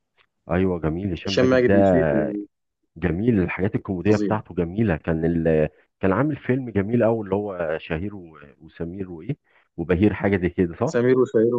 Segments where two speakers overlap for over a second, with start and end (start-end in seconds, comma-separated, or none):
none